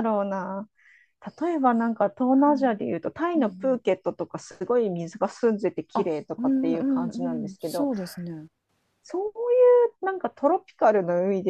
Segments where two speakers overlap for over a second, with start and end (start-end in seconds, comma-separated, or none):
5.9-7.9